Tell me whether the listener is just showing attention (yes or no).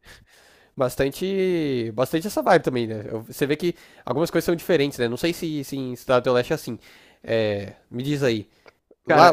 yes